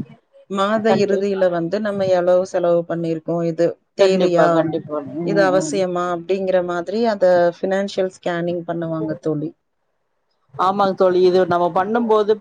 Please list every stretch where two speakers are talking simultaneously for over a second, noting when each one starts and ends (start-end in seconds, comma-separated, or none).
none